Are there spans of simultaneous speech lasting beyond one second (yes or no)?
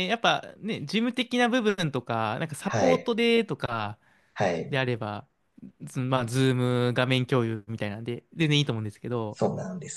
no